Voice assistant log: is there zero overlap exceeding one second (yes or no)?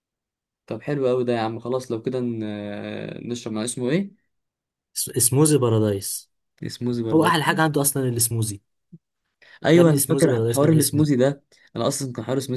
no